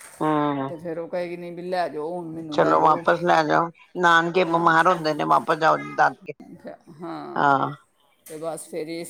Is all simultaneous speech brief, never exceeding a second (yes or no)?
yes